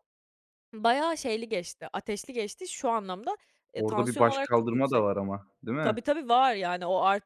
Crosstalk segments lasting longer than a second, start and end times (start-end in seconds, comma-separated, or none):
3.8-5.1